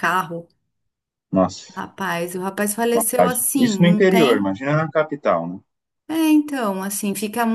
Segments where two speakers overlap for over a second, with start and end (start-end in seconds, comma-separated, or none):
2.9-4.6